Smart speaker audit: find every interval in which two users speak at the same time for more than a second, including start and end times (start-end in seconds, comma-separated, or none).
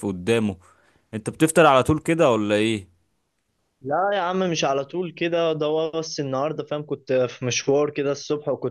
none